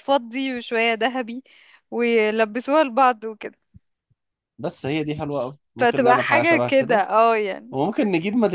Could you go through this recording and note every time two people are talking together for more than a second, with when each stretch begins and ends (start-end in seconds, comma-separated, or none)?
5.8-7.0